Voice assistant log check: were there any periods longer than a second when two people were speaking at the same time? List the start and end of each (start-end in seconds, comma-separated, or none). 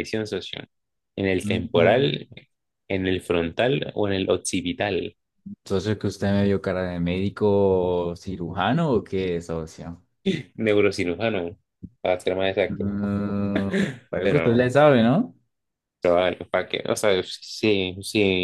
none